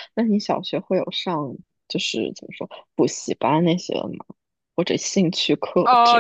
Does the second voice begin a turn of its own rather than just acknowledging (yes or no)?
yes